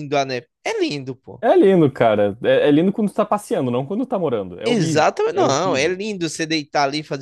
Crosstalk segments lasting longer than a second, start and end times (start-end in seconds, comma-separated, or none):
4.6-6.0